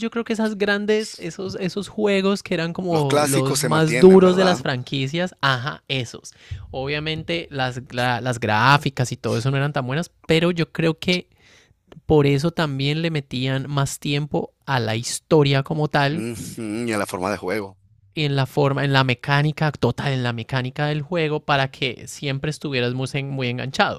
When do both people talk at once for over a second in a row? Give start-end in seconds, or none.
2.9-4.7